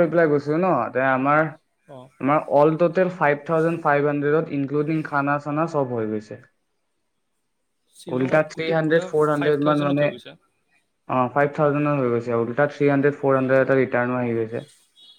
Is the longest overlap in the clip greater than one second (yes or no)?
yes